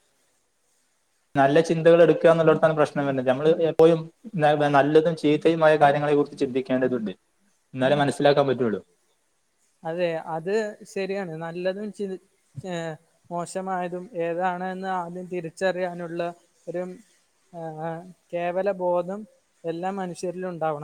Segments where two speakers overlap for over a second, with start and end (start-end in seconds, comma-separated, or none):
none